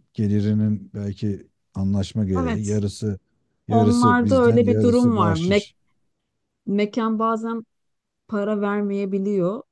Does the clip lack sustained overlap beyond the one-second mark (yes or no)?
no